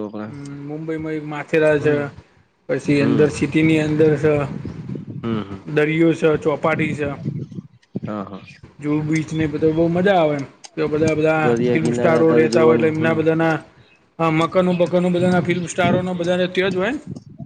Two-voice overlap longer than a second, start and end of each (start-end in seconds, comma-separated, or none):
11.4-13.2